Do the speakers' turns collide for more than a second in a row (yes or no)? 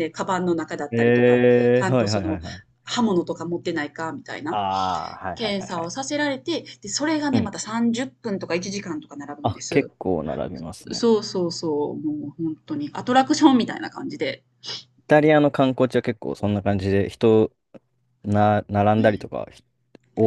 yes